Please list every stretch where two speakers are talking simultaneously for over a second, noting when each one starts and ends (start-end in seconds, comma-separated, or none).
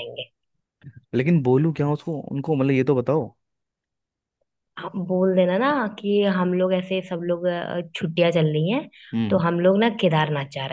none